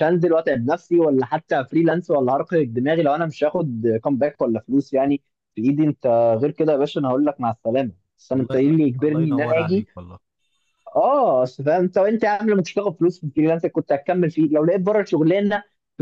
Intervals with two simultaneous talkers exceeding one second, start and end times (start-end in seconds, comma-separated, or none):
8.3-9.9